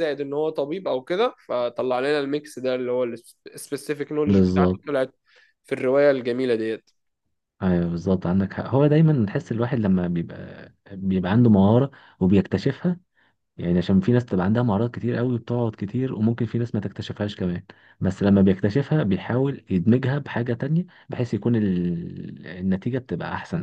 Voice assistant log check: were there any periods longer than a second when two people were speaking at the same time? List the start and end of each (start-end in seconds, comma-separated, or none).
none